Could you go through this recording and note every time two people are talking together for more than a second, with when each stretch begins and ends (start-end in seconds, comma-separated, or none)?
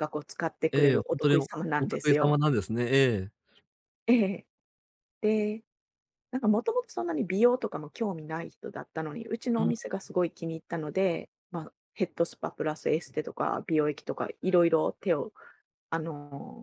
0.7-2.4